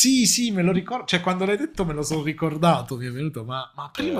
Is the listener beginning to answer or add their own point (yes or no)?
yes